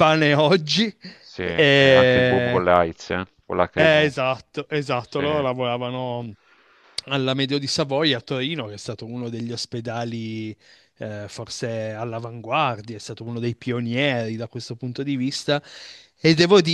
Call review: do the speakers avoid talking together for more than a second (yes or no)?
no